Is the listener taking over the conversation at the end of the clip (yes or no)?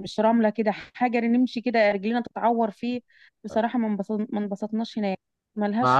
yes